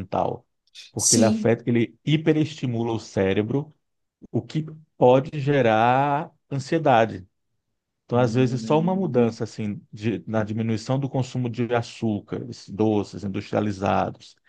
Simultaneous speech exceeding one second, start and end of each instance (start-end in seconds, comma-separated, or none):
8.1-9.4